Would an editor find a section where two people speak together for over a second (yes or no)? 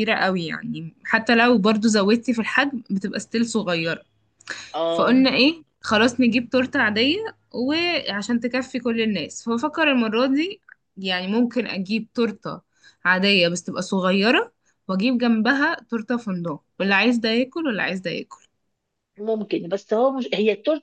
no